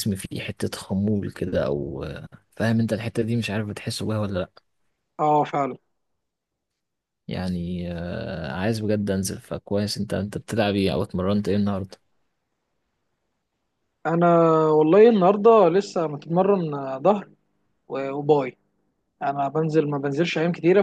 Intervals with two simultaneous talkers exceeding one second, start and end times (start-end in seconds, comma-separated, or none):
none